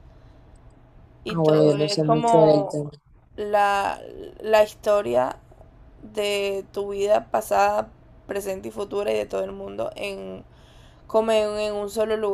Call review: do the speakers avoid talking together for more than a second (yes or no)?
no